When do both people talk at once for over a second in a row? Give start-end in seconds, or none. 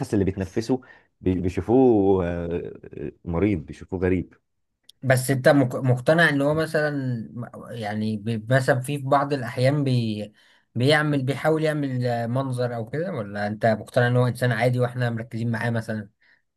none